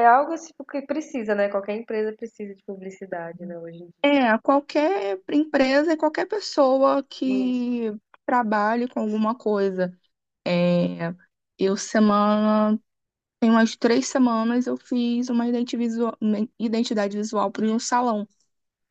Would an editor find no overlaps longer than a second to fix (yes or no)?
yes